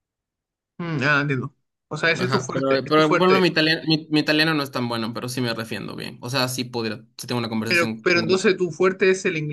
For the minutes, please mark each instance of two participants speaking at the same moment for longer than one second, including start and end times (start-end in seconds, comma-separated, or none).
2.2-3.5